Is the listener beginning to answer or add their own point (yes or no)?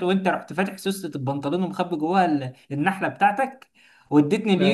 no